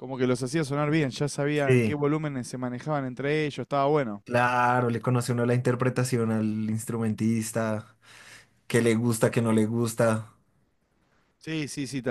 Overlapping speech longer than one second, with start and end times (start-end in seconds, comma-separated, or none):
none